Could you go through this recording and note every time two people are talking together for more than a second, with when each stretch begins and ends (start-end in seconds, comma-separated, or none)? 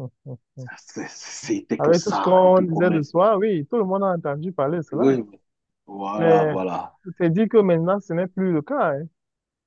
1.8-3.3